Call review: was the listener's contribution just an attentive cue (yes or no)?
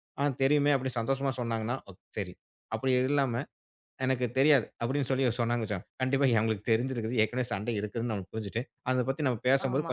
yes